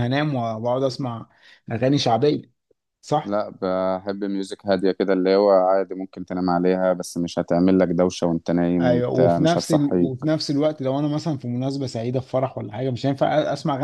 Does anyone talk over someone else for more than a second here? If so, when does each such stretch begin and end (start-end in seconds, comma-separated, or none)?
8.8-10.2